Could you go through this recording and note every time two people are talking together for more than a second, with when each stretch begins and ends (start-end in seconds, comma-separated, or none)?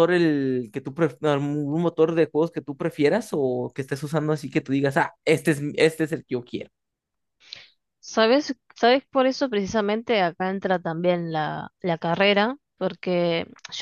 none